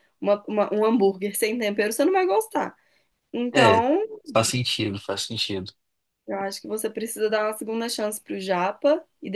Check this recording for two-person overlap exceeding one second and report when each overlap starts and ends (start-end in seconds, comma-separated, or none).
none